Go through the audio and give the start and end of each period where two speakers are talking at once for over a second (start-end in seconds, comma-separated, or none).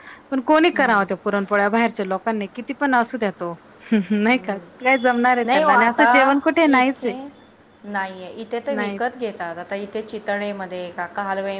none